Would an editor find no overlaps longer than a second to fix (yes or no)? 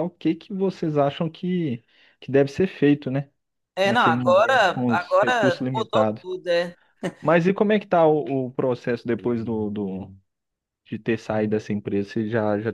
no